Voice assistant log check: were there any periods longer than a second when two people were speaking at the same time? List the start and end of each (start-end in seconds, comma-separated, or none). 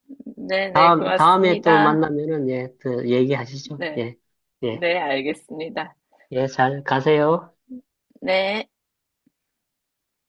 0.7-2.1